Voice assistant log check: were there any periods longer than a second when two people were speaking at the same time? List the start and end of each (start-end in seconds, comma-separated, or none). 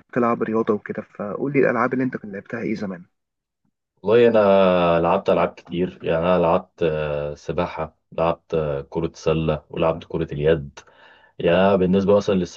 none